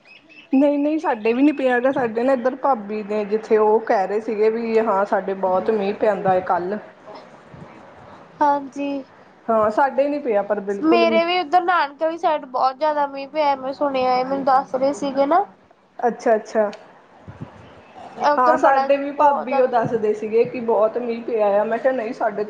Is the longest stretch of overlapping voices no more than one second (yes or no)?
no